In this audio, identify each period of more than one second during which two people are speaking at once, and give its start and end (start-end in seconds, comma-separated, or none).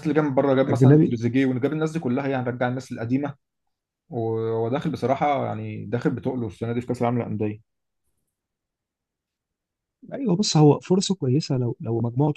none